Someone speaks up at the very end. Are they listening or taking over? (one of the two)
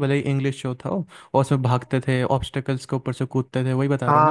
taking over